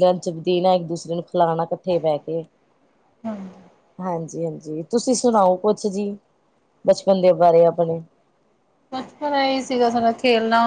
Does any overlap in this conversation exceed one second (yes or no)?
no